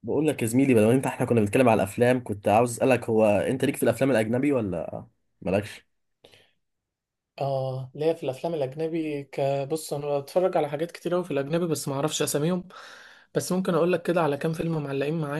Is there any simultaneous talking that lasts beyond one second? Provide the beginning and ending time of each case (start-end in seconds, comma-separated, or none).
none